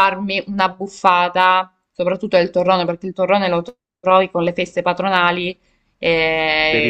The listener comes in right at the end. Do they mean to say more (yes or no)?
no